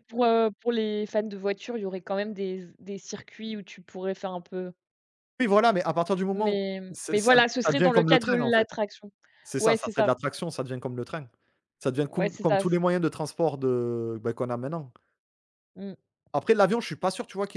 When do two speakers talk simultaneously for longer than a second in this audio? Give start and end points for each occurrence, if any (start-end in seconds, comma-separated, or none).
6.3-8.7